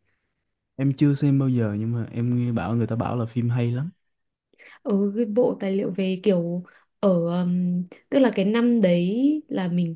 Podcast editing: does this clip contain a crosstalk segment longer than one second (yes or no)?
no